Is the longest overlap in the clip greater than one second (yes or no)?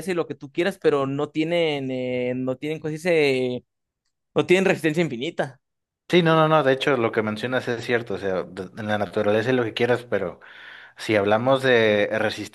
no